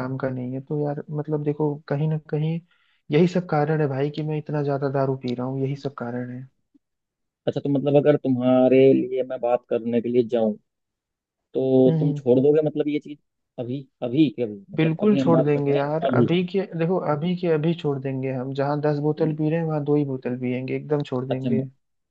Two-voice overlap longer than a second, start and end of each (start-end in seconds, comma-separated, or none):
14.8-16.3